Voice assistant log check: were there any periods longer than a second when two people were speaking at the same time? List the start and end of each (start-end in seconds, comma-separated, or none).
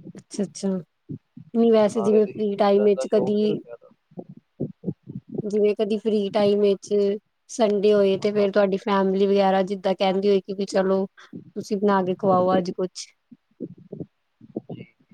1.9-3.6